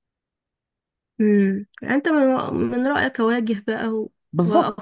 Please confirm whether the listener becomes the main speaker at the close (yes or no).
yes